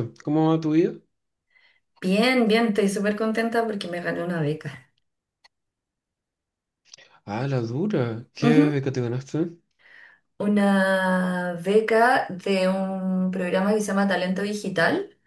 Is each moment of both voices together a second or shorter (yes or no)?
yes